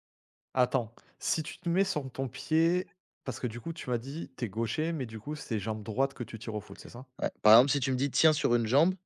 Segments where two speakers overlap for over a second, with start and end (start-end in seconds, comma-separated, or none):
none